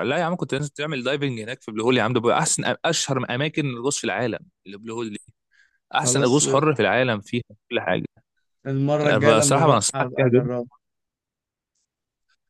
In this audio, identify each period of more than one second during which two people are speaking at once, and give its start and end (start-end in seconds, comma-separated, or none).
9.0-10.5